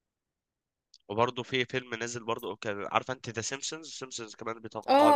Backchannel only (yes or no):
no